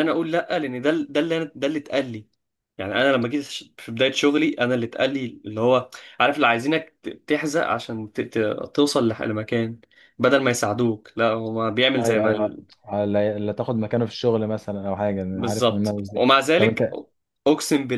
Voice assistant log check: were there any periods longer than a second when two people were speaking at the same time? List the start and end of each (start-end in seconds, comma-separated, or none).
15.3-16.9